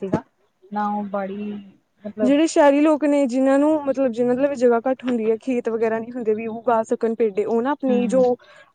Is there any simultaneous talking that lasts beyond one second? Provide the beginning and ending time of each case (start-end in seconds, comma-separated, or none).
none